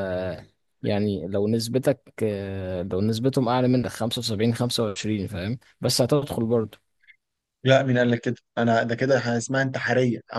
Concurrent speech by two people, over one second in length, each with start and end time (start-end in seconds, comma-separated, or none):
none